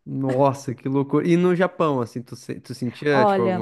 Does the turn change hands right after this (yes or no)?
no